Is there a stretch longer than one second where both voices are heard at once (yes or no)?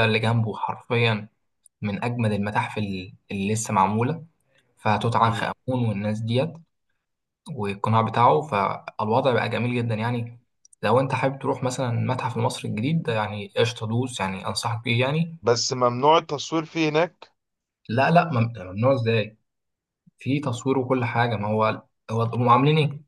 no